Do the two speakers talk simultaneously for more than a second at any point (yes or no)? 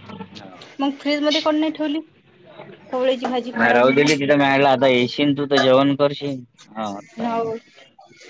no